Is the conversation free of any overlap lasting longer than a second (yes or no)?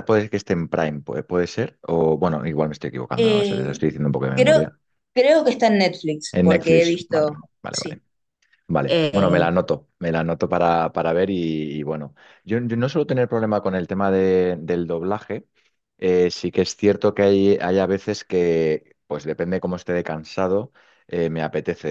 no